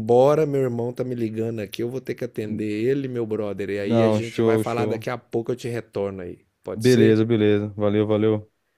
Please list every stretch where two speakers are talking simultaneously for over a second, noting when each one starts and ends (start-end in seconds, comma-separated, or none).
3.8-5.1